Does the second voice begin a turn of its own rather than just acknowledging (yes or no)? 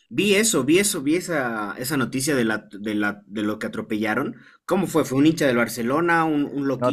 yes